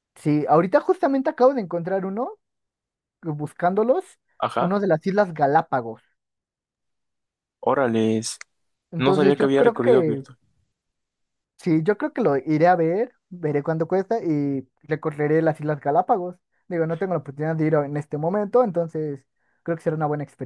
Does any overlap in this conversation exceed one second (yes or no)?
yes